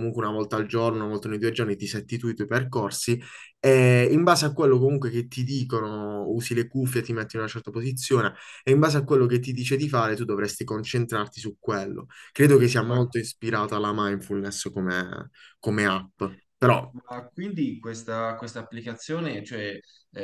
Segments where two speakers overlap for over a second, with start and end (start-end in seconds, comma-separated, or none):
none